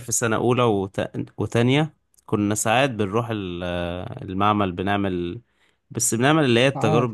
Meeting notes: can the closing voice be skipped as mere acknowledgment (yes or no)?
yes